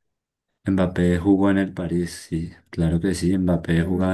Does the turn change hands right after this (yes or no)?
no